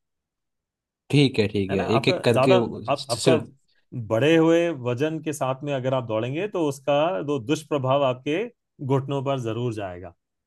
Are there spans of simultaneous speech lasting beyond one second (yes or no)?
yes